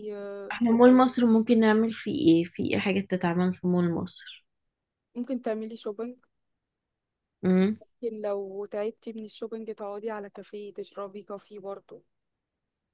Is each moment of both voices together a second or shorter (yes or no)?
yes